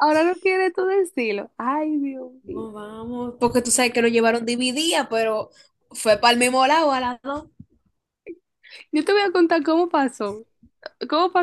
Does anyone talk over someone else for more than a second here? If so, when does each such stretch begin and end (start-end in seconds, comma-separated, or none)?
none